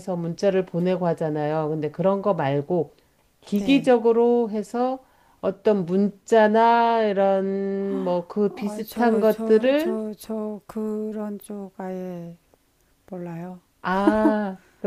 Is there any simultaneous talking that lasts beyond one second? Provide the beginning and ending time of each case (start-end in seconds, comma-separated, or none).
8.5-10.0